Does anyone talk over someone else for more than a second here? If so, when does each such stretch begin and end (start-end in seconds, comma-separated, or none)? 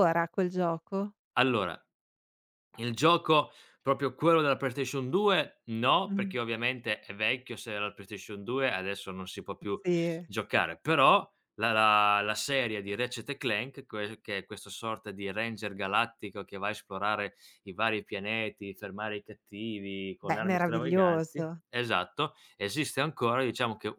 20.3-21.6